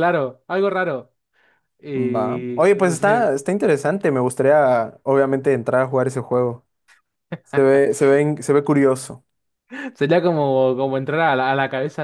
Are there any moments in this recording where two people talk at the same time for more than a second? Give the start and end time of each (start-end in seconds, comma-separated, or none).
2.0-3.2